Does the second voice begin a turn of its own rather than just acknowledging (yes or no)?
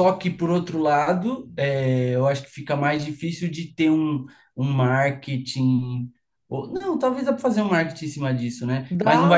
no